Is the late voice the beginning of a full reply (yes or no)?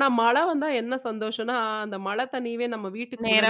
no